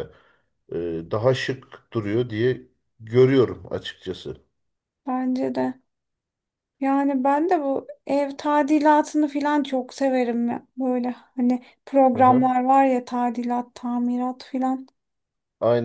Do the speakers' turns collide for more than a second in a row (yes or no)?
no